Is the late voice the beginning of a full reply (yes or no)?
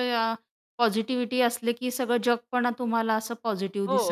yes